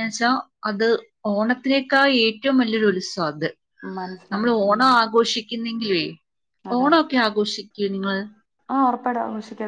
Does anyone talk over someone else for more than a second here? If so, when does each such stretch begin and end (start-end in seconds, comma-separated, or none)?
none